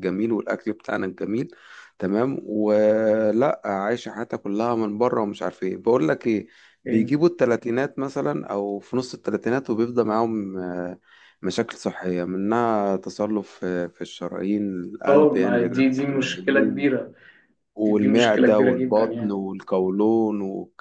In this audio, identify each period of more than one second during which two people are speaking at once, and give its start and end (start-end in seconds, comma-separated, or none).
15.1-16.9, 17.8-19.3